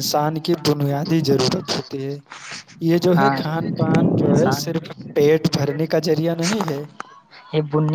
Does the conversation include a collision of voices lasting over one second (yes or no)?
yes